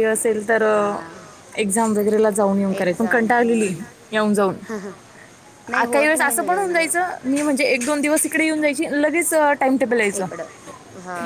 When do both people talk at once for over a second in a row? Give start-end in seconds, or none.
5.8-7.1